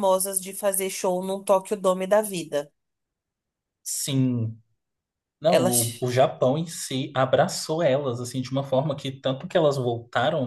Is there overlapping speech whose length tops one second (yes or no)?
no